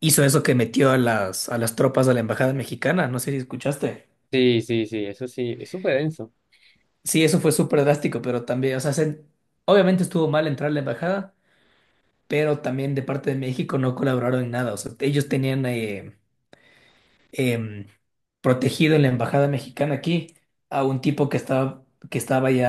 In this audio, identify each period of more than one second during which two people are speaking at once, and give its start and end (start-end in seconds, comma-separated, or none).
none